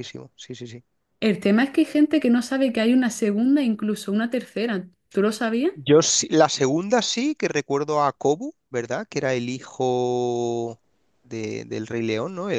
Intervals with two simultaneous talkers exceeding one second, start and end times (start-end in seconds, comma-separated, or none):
none